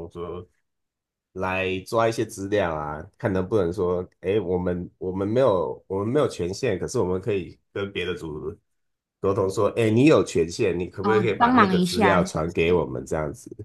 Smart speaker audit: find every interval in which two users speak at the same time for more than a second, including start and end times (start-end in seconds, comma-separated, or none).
11.0-12.8